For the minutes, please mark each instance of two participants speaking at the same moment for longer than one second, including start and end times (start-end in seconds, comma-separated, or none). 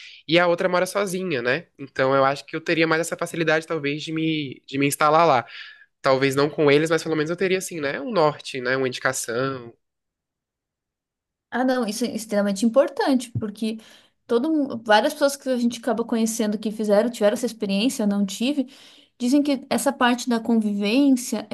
none